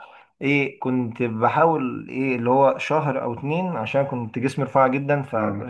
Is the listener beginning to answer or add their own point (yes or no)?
no